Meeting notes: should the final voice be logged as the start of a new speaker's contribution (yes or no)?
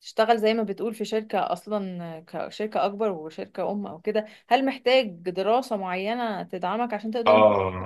yes